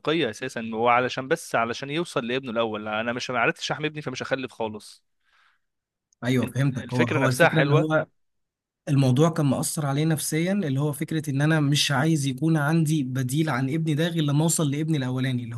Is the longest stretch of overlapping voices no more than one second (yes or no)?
no